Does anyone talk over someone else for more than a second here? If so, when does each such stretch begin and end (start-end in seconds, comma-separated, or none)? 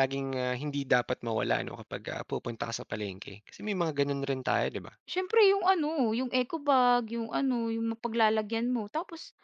none